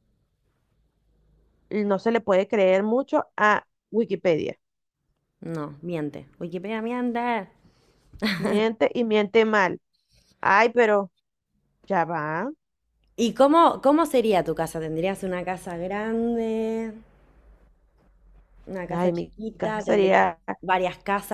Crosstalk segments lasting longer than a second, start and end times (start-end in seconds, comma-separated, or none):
18.9-20.4